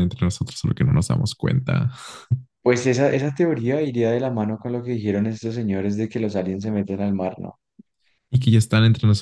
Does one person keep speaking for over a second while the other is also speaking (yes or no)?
no